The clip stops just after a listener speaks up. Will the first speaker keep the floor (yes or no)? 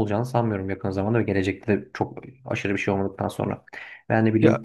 yes